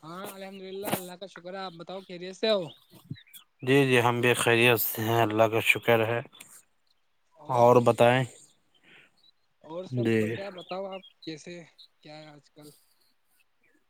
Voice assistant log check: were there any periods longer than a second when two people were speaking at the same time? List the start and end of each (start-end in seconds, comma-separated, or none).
none